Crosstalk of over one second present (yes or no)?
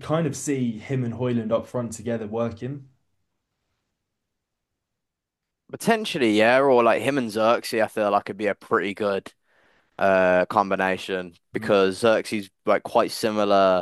no